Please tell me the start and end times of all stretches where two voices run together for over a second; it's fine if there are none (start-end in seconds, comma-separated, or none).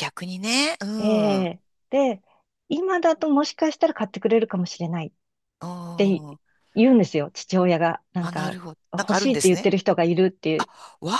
8.2-9.7